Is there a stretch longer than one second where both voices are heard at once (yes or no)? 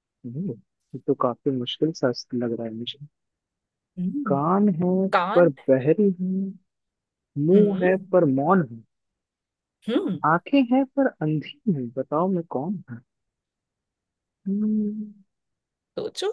no